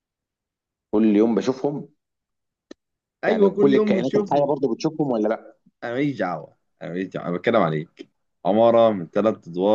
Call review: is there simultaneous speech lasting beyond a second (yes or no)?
yes